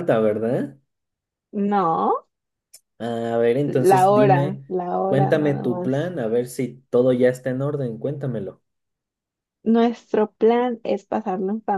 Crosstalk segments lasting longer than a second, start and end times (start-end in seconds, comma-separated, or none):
3.6-6.1